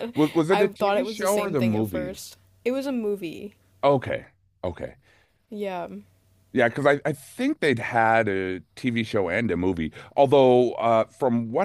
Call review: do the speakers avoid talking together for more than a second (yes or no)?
no